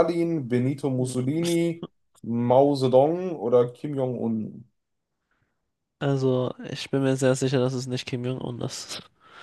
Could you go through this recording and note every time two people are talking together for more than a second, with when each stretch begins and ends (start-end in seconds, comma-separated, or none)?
none